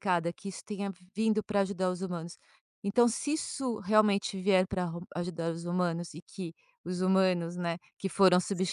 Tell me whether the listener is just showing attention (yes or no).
yes